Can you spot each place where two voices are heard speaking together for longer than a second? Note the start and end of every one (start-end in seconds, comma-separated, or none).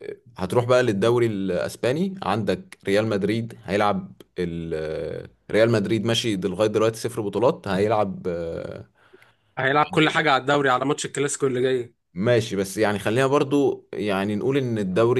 none